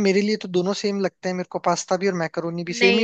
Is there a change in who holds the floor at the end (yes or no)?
yes